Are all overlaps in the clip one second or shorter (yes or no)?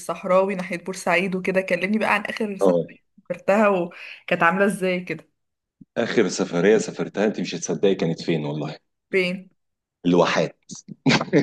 yes